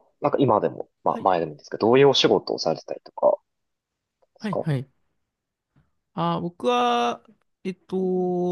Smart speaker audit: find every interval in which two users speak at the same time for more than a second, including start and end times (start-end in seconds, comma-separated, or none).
none